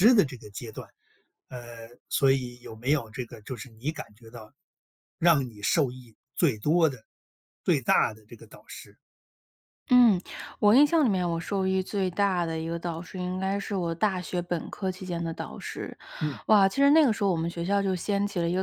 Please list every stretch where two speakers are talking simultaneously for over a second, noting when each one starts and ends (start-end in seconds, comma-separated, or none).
none